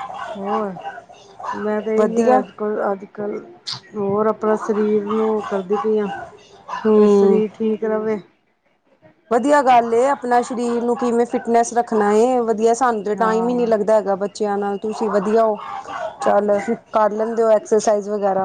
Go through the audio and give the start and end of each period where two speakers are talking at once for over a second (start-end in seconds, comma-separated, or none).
none